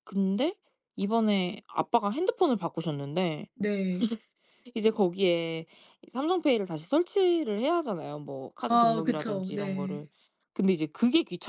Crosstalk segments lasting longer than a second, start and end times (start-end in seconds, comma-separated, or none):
8.7-10.0